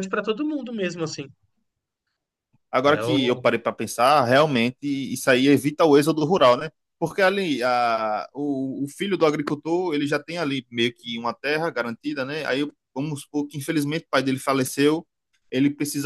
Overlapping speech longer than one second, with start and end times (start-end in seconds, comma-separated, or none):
none